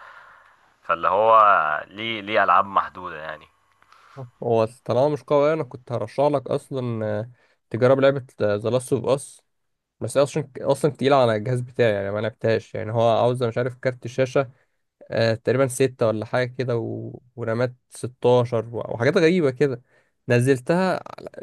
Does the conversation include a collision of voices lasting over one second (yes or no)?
no